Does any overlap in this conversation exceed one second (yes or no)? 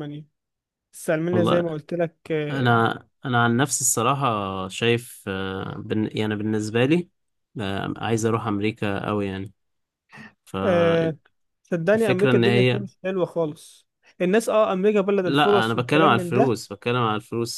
yes